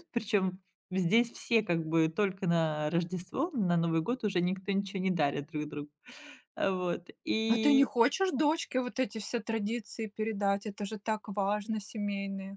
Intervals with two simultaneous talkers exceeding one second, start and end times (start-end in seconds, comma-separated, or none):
none